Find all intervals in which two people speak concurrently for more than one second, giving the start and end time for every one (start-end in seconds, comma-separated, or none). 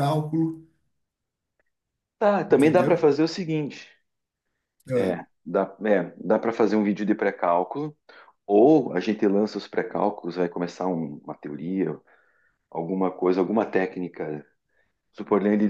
none